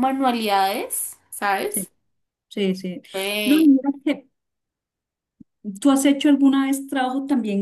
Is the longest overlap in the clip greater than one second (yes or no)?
no